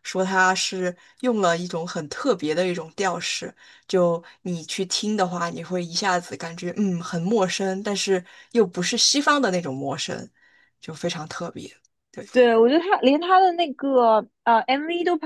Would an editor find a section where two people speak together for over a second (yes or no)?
no